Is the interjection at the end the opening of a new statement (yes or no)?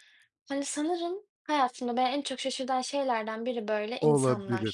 yes